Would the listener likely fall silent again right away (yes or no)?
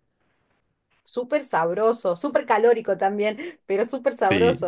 no